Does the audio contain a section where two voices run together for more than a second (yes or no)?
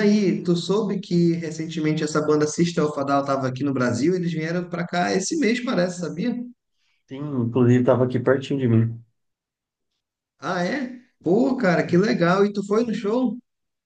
no